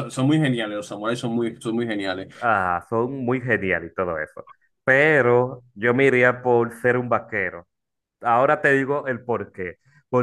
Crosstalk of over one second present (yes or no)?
no